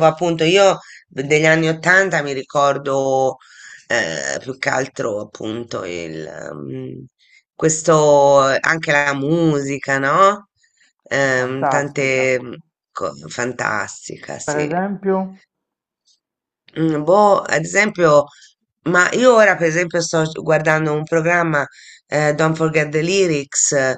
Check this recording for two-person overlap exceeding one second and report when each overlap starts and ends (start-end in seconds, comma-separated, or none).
11.1-12.3